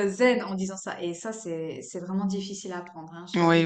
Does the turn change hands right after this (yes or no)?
yes